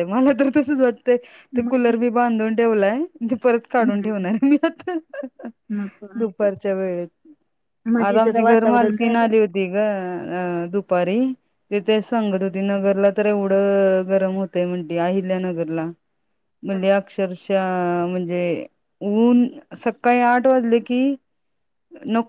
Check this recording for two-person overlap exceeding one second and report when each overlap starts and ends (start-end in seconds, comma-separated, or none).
8.1-9.3